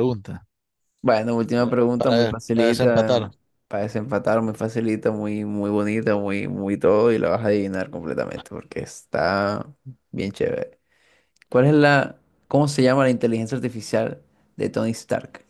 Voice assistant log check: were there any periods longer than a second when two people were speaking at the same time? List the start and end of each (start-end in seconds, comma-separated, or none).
2.0-3.3